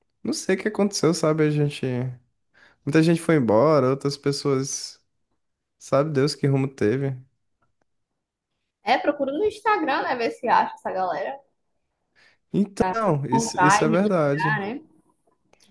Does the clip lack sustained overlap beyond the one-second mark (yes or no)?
no